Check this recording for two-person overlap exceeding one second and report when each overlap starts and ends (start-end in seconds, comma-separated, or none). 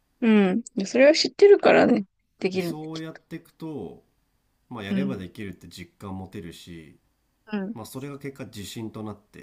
none